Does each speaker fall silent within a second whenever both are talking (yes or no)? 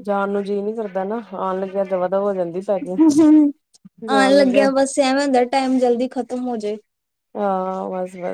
yes